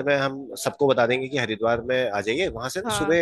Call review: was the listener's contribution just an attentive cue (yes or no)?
yes